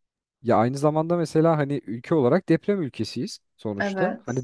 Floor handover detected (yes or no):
no